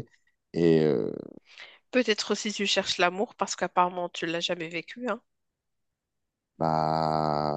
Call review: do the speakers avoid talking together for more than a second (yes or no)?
yes